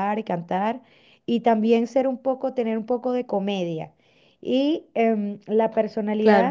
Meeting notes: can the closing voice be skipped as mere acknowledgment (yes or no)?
yes